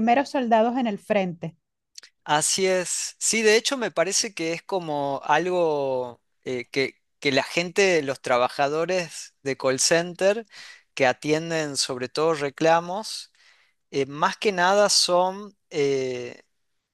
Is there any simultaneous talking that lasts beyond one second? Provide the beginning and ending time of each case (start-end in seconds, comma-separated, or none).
none